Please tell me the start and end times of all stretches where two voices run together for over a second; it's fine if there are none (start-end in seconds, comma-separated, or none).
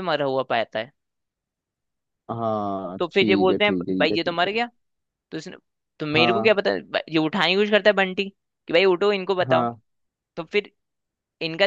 3.0-4.6